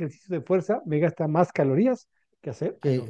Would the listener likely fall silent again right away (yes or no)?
no